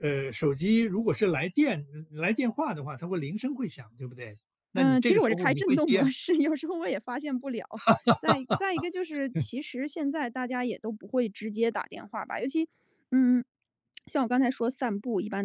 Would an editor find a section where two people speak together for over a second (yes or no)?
yes